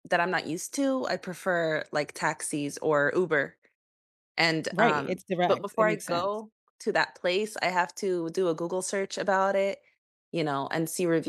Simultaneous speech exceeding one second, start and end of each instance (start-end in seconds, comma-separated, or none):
4.7-6.4